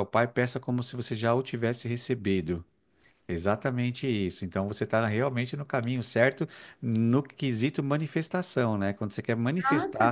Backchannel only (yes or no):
yes